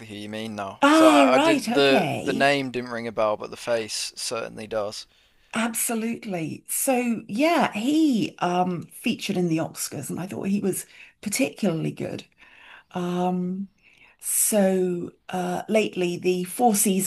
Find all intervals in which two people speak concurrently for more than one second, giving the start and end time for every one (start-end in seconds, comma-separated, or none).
0.8-2.5